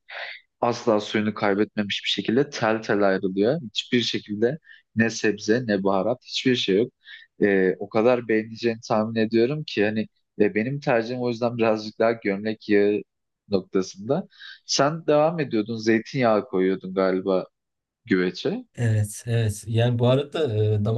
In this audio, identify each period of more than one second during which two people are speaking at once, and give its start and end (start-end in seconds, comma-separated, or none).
none